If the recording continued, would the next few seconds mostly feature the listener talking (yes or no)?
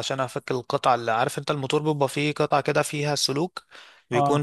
no